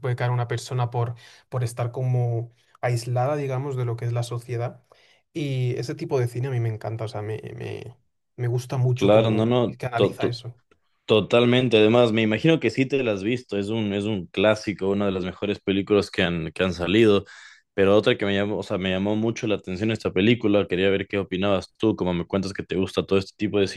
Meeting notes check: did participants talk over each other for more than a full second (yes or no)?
yes